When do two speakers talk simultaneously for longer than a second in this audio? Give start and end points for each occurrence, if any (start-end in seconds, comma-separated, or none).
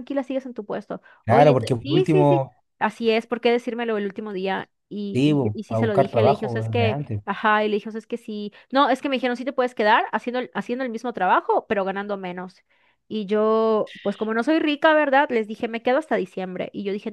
1.2-2.6, 5.1-7.2